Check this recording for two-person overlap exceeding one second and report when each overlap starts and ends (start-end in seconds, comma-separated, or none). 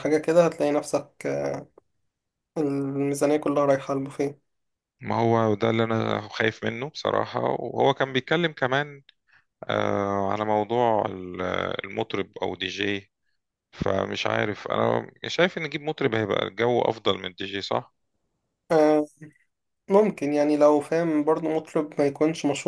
none